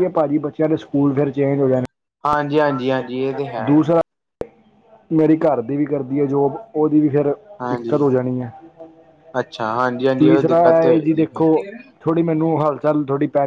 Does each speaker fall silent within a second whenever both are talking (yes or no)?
no